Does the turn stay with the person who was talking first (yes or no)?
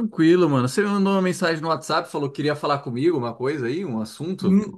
no